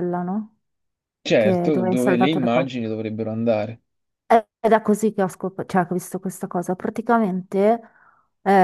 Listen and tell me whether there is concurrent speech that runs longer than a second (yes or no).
yes